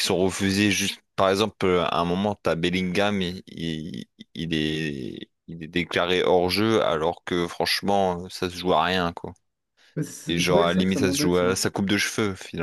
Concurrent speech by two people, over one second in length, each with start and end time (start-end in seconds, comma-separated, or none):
10.3-11.6